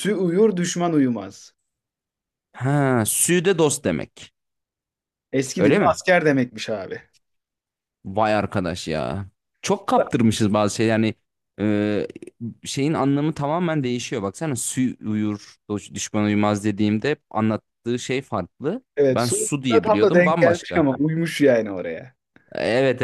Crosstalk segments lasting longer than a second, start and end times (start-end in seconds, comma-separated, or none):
18.9-20.9